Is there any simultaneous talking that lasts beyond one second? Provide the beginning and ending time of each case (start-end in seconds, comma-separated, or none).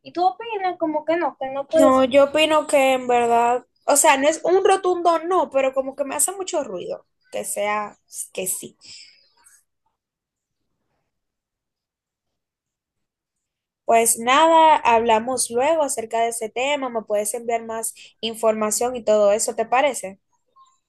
none